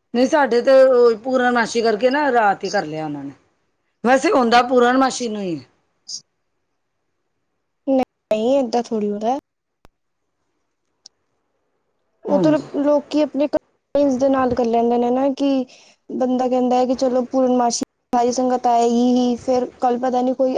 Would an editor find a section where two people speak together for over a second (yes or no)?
no